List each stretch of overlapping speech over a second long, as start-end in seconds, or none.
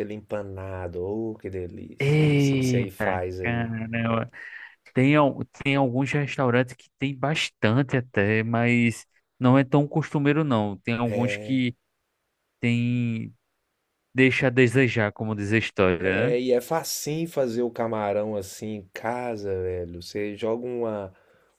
2.0-3.7